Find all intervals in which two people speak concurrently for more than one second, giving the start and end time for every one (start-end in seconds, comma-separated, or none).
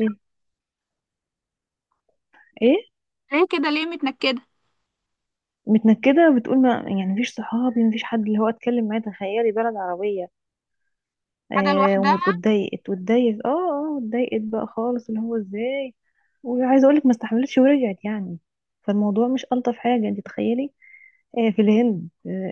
none